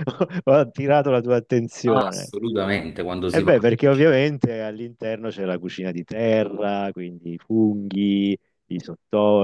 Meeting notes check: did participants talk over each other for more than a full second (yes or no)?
no